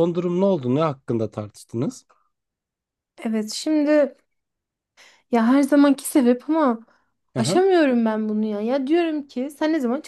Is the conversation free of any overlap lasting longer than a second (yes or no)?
yes